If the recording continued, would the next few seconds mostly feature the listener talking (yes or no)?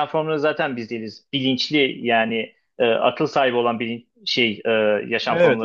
no